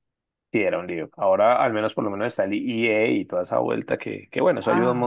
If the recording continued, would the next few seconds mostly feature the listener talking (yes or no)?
no